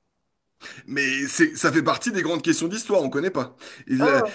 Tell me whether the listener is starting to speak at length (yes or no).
yes